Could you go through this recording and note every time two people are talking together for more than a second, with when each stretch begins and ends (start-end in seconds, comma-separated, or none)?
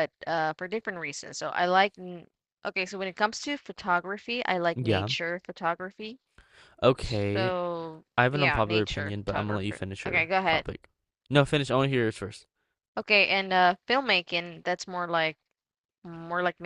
8.2-10.6